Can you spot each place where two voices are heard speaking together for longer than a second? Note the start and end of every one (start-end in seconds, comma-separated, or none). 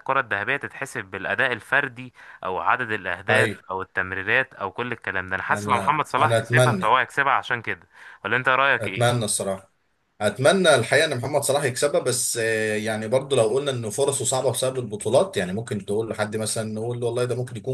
5.5-6.9